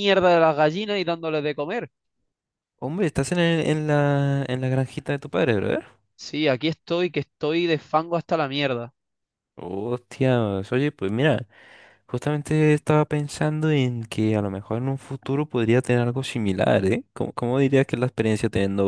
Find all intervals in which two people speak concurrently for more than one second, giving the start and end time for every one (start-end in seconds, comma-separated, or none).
none